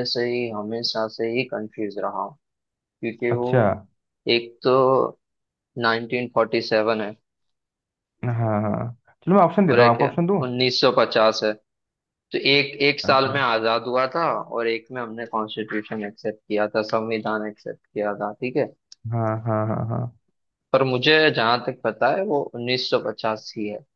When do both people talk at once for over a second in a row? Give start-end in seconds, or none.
none